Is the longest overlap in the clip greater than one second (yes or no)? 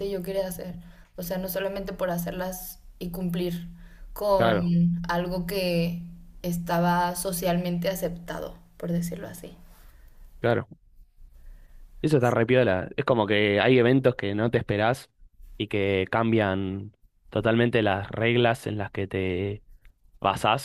no